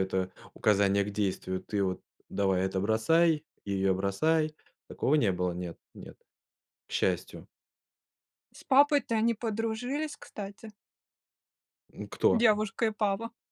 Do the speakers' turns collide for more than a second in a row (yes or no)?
no